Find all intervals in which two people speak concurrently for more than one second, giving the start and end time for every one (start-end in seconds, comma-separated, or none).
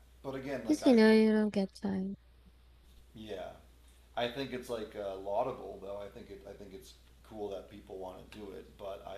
none